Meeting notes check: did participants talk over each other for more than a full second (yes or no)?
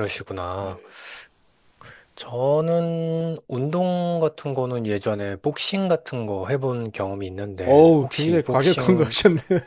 yes